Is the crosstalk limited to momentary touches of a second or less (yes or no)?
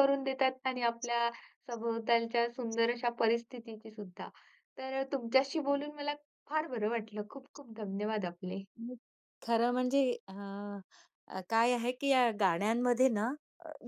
yes